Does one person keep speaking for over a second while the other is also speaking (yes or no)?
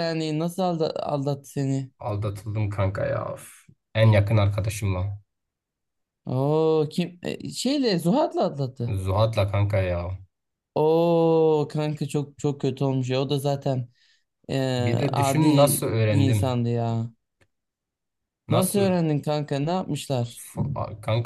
no